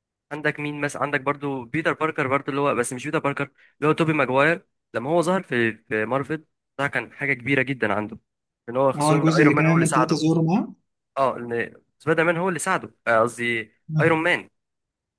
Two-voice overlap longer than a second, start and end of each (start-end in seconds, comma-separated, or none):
9.0-10.2